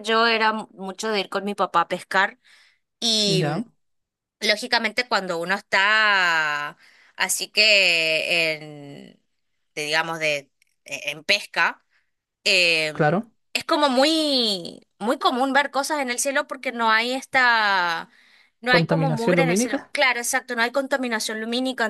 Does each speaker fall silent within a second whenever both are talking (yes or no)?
no